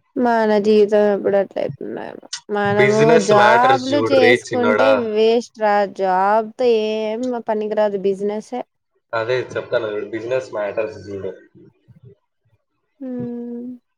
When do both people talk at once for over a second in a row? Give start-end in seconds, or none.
2.8-4.9